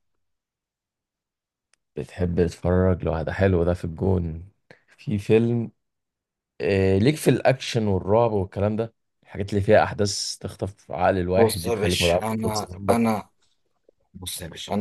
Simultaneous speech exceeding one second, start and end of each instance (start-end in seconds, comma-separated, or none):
11.3-13.0